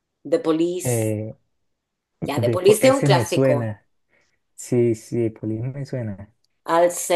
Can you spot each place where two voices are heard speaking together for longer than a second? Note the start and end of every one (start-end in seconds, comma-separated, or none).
2.2-3.7